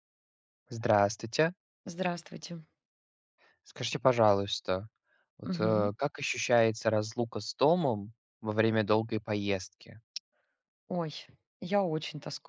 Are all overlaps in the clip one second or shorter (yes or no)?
yes